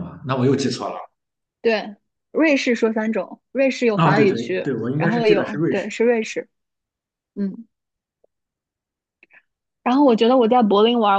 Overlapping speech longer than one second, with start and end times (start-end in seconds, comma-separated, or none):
3.9-6.0